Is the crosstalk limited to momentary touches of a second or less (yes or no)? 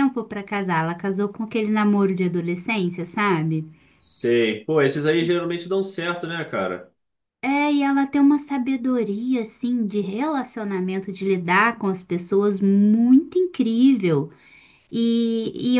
yes